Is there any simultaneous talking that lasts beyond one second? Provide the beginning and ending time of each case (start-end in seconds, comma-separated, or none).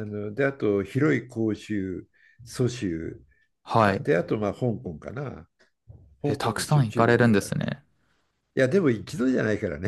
6.2-7.6